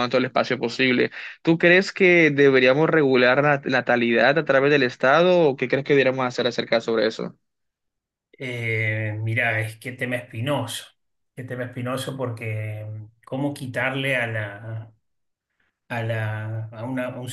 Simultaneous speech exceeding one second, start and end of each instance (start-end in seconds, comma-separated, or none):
none